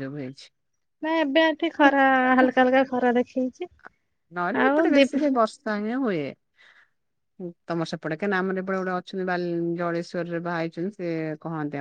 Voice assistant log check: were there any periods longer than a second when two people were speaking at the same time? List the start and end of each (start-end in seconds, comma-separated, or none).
none